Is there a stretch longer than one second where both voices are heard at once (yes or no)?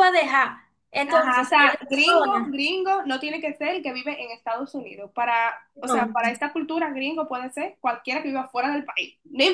yes